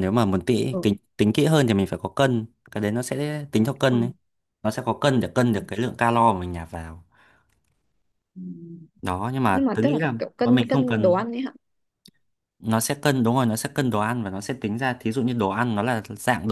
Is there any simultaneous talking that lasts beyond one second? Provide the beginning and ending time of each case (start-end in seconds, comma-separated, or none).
9.5-11.2